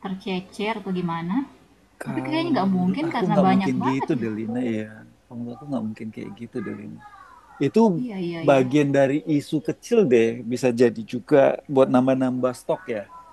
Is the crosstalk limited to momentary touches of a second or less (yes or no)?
no